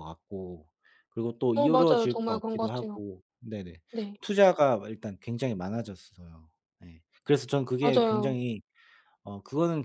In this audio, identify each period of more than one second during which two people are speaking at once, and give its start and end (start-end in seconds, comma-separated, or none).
1.5-3.0